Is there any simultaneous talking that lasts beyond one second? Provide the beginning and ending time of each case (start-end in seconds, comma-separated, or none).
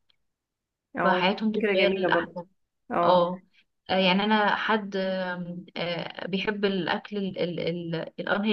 1.0-2.4